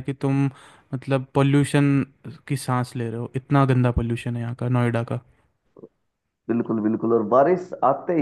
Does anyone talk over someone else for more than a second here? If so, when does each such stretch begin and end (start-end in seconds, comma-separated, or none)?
none